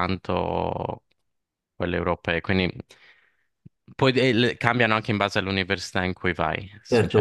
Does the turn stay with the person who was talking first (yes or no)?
no